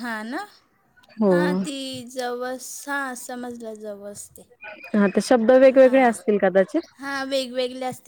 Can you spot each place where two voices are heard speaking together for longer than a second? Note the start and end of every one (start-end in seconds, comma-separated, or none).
none